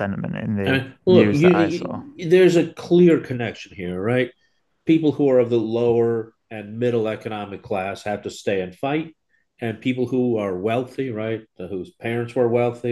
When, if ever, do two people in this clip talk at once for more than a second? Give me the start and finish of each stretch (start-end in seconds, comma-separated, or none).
0.6-2.0